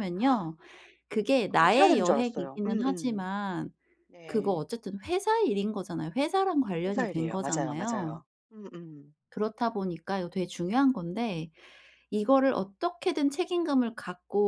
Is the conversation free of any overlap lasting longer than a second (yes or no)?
no